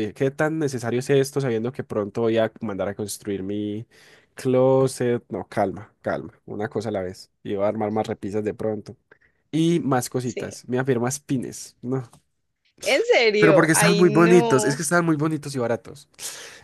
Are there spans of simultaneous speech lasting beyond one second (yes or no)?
yes